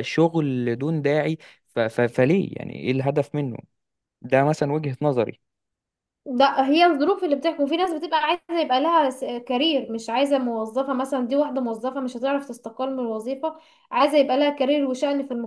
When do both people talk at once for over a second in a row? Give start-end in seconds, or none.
none